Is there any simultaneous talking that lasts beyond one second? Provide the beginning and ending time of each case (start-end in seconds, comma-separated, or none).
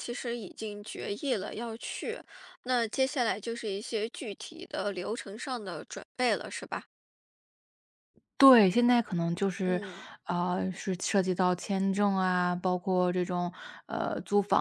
none